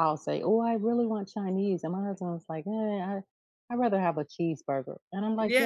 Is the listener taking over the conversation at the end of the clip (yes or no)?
no